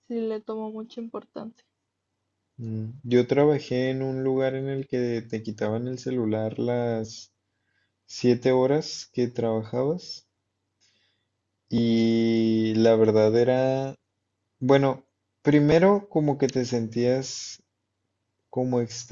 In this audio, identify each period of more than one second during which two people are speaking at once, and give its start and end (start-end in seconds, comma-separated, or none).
none